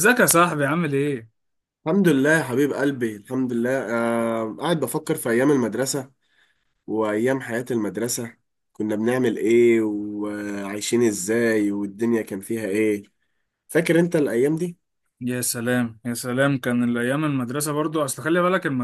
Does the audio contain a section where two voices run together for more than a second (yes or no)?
no